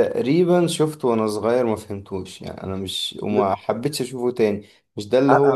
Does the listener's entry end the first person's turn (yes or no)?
no